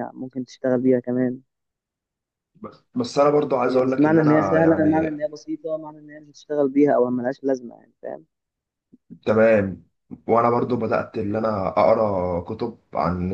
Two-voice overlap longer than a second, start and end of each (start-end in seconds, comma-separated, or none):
3.6-5.1